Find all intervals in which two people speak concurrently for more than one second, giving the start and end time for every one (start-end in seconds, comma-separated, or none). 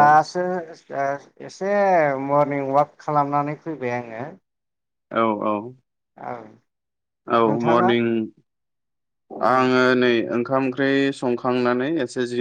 none